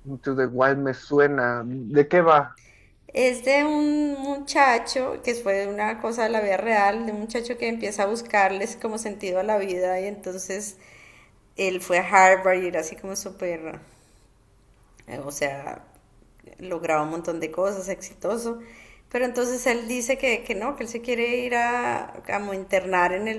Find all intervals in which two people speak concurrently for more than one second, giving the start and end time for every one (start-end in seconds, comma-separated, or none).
none